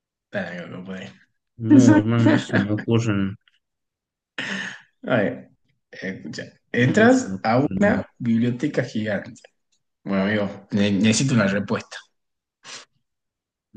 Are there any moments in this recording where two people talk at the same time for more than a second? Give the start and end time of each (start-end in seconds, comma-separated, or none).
6.7-8.0